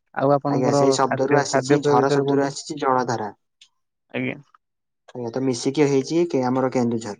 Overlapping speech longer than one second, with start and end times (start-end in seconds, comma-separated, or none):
0.6-2.6